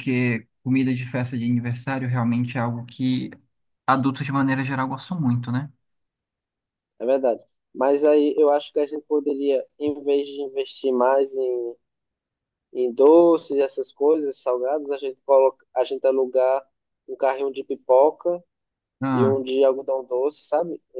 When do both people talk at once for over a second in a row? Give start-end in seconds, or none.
none